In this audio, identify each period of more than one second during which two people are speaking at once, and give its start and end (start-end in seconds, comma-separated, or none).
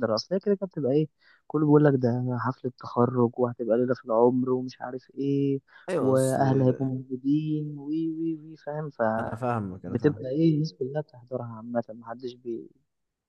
none